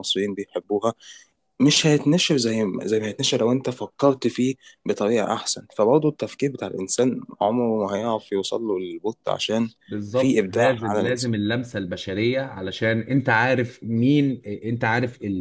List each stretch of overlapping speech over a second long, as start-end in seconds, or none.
10.1-11.4